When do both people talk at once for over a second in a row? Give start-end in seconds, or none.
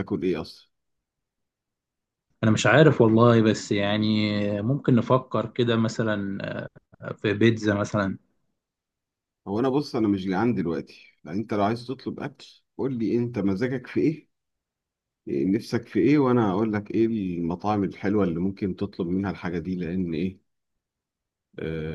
none